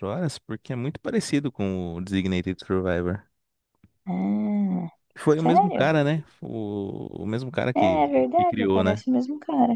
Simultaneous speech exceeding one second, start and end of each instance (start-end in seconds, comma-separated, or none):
7.7-9.0